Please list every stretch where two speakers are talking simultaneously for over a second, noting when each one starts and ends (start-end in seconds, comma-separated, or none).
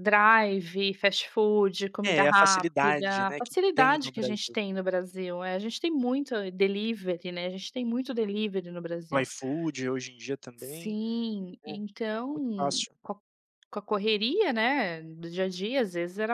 2.1-4.5